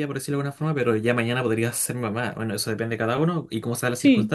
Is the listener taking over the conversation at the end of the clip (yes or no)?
no